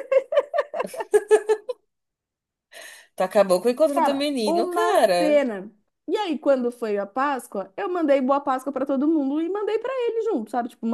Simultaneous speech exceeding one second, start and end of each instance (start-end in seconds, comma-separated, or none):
3.9-5.4